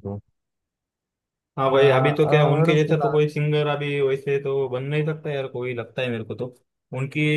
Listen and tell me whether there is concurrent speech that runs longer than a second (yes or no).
yes